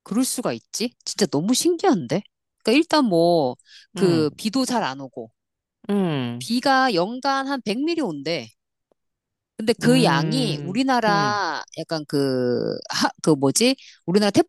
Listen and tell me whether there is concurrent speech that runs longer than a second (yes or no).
yes